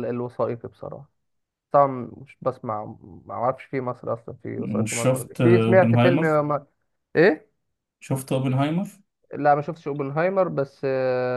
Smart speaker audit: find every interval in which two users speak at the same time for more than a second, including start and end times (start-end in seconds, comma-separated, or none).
4.6-6.3